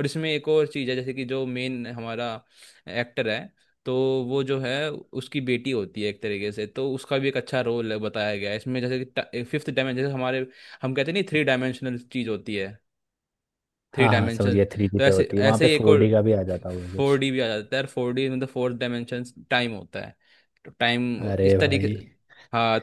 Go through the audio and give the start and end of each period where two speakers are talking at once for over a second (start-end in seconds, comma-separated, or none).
13.9-16.1